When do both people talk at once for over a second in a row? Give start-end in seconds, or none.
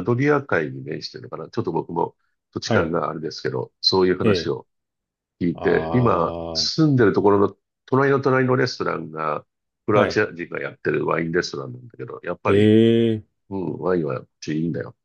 5.5-6.8